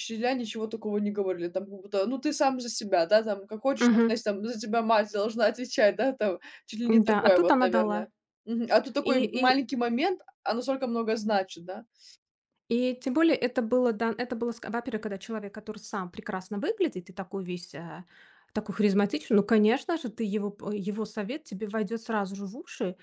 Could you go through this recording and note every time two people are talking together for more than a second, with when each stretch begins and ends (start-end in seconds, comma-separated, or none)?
6.9-8.1